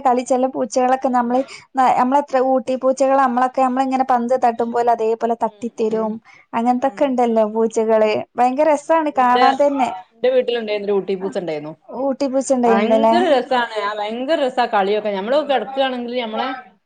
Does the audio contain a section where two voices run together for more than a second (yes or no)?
no